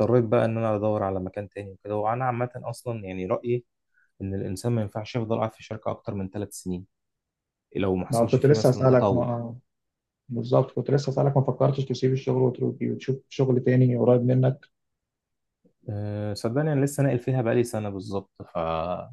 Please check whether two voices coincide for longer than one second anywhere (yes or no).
yes